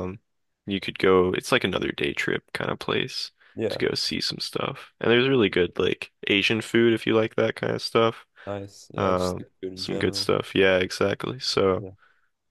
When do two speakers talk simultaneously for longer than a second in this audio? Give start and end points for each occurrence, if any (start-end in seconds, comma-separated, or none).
9.0-10.3